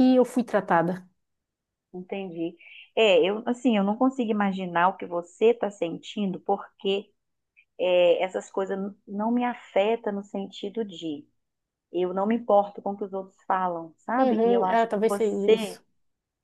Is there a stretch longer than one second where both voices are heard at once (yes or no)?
yes